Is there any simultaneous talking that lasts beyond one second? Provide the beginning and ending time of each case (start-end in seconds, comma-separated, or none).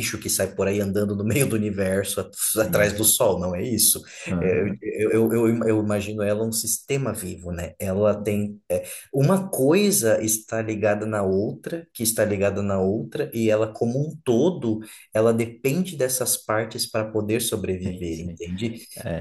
none